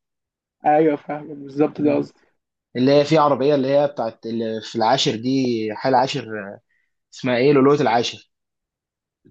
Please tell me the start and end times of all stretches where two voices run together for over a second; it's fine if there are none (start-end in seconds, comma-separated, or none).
none